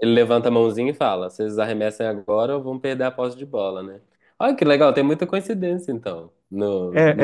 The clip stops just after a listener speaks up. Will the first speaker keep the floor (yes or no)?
no